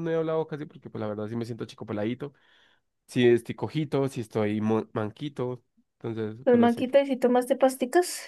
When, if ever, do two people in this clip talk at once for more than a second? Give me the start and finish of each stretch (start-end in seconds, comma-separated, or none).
none